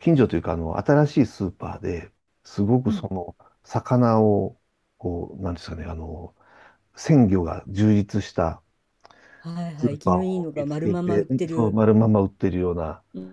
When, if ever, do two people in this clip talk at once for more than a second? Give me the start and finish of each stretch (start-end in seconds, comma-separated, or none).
9.8-11.8